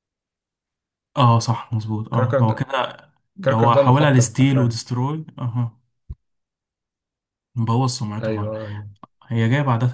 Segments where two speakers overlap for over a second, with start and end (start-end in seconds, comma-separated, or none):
3.5-4.8